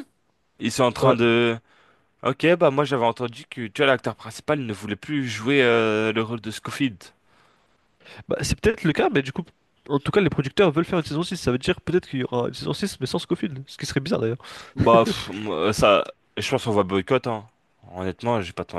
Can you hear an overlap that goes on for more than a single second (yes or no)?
no